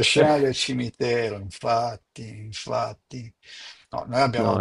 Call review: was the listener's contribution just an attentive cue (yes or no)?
yes